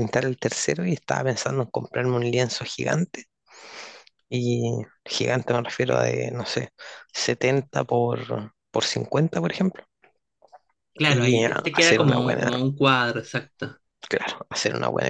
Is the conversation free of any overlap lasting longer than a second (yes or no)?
no